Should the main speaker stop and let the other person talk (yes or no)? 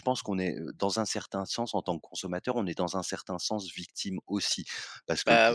yes